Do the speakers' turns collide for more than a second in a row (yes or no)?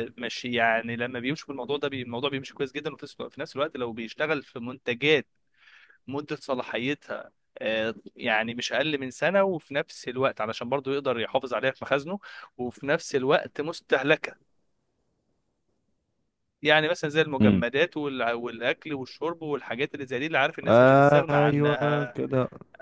yes